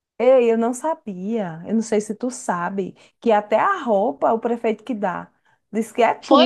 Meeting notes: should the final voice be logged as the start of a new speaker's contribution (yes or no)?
yes